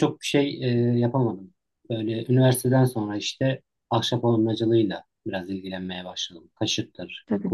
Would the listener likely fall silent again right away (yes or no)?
no